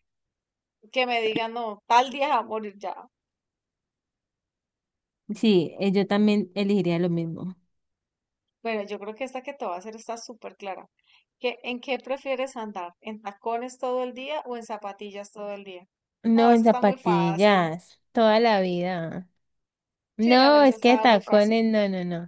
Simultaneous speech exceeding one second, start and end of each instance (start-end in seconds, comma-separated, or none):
16.3-17.7, 20.2-21.6